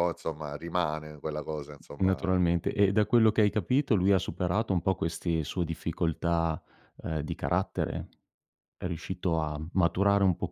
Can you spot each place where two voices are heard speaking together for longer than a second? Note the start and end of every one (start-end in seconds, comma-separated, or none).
none